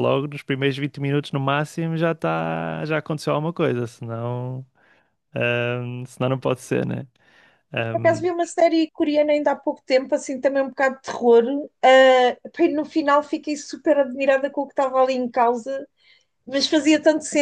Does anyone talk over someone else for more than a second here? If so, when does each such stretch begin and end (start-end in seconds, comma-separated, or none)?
none